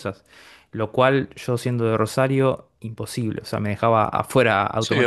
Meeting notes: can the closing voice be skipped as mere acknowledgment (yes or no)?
no